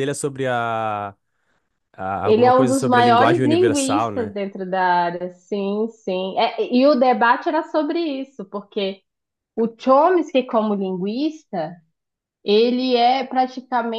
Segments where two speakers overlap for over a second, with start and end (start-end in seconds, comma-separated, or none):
2.2-4.3